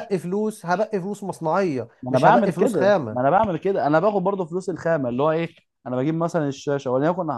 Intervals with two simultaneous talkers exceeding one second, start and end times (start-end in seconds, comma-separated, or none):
2.0-3.3